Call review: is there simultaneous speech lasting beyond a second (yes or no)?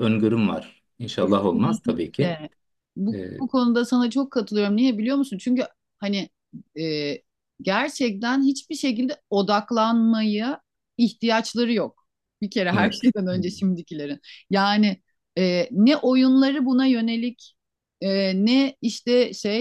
yes